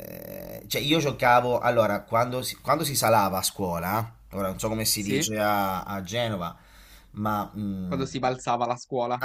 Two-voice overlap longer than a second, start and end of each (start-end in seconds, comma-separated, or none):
none